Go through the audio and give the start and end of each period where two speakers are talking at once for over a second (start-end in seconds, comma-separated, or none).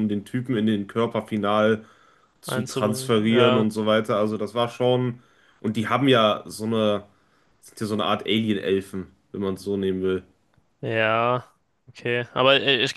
2.5-3.7